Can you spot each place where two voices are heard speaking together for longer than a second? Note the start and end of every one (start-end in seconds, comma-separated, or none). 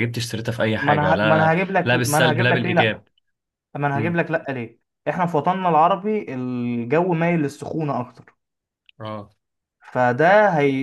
0.8-3.0